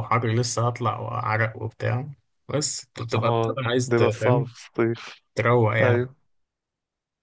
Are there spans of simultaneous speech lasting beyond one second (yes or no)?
yes